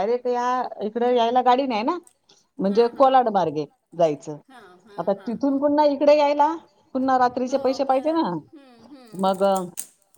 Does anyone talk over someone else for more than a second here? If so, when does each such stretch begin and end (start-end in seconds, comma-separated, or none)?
2.7-4.4, 6.9-8.2